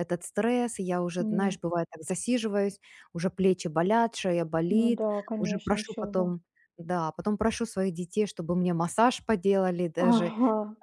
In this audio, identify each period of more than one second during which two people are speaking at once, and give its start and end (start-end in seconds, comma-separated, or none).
4.7-6.3